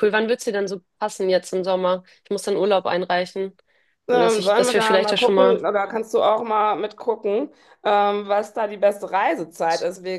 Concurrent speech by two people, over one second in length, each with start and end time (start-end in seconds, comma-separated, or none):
4.1-5.7